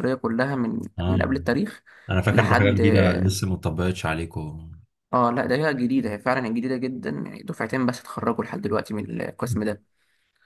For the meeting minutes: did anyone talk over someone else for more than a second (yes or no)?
no